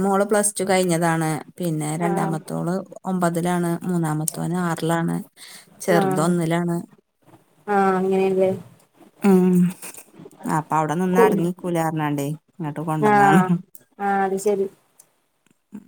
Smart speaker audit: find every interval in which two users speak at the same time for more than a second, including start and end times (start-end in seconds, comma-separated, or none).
none